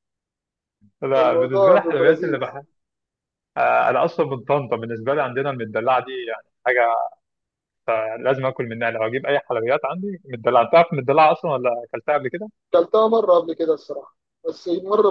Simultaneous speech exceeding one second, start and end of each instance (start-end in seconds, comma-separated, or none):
1.2-2.5